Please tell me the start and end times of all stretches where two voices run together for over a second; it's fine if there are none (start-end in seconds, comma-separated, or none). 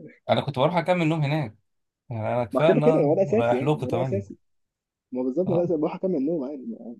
2.5-4.2